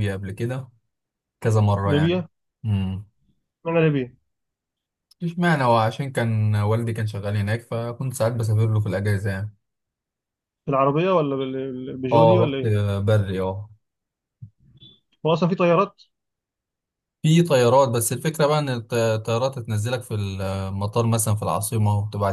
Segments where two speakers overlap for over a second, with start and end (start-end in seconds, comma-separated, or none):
none